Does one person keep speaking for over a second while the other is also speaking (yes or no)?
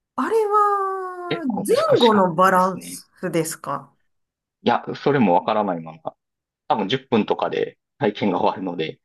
yes